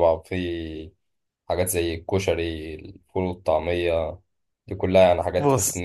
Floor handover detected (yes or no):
no